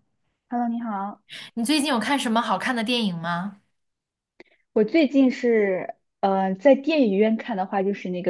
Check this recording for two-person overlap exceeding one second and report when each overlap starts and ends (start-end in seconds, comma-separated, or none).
none